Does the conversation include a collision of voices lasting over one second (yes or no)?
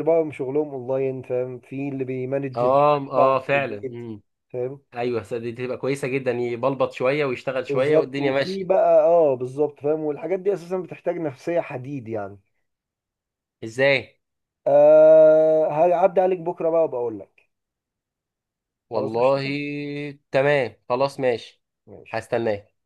yes